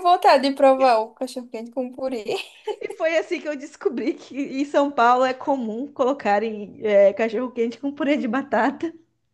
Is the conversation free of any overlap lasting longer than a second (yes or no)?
yes